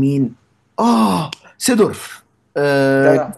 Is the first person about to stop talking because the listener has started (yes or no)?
no